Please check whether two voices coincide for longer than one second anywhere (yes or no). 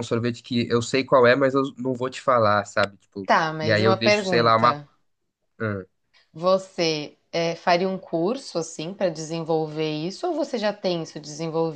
yes